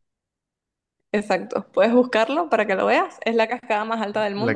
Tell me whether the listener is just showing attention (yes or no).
no